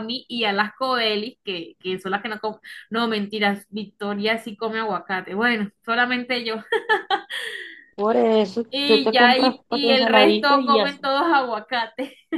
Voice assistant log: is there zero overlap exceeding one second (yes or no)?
no